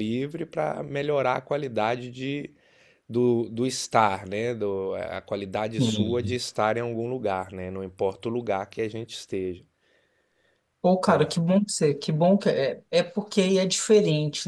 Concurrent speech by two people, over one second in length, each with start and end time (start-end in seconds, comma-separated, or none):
none